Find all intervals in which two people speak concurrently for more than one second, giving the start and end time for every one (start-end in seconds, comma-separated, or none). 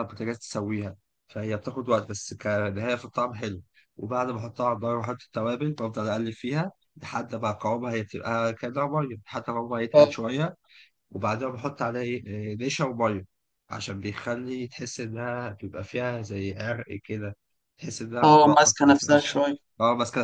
18.2-19.6